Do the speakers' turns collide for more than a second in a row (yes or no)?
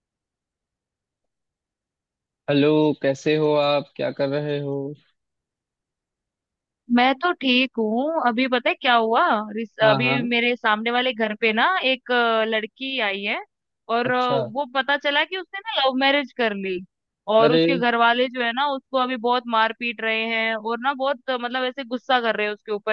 no